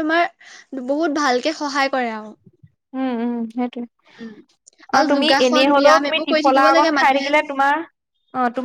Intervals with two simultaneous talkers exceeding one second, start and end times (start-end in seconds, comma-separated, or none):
5.0-7.3